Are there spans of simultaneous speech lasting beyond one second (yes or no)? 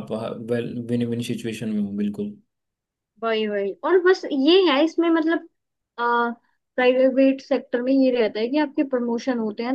no